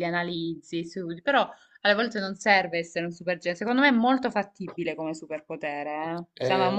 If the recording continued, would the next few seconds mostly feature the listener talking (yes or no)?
yes